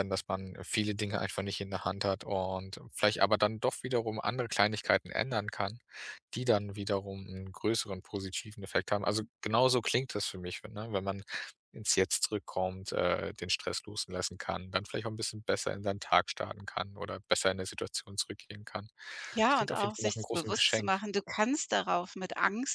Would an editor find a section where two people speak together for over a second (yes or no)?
yes